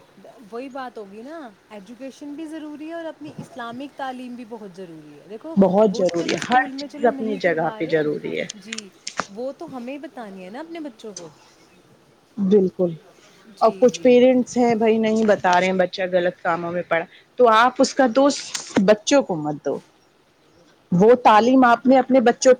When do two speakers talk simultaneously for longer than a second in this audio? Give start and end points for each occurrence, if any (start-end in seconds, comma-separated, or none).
5.9-8.0